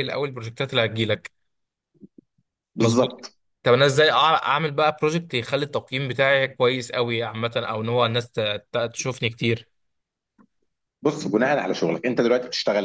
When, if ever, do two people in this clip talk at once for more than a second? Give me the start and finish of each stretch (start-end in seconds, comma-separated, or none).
none